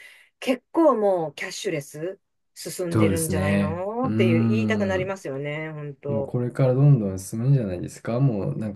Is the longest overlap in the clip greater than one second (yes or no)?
yes